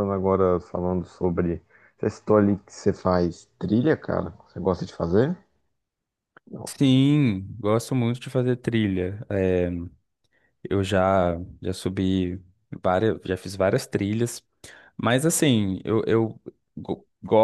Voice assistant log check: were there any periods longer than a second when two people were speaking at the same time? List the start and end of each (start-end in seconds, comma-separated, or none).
none